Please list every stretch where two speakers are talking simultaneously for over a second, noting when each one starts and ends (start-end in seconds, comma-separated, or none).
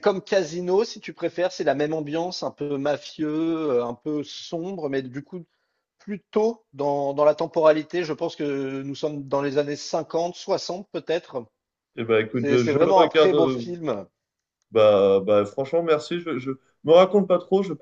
12.3-13.7